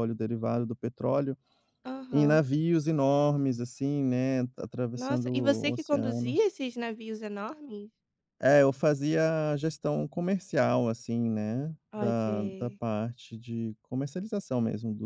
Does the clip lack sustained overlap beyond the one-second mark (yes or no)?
no